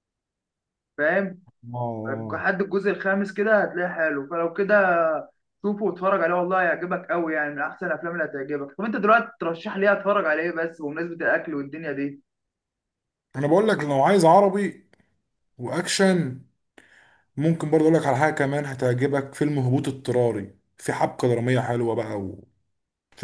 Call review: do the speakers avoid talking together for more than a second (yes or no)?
yes